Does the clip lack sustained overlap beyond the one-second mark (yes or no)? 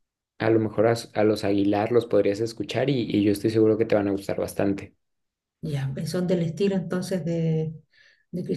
yes